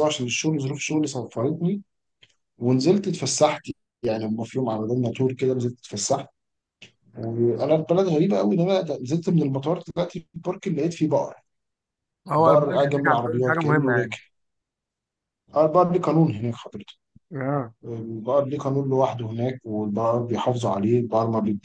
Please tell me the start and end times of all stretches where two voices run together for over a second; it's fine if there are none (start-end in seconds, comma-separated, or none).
12.3-14.2